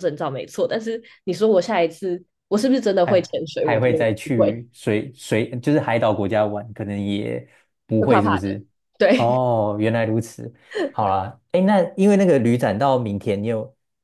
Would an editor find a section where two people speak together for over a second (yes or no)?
yes